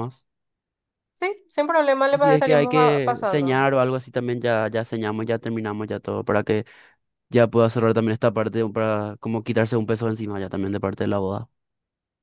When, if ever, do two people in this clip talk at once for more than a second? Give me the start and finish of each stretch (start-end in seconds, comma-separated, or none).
2.1-3.6